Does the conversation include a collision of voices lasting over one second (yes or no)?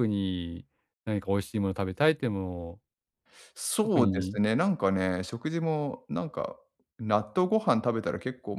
no